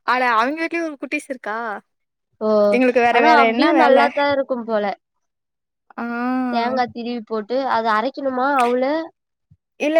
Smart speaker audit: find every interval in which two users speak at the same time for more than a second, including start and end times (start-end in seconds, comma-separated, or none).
none